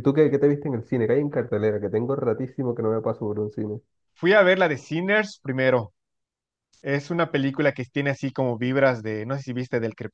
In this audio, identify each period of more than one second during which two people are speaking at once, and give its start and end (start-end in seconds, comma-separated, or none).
none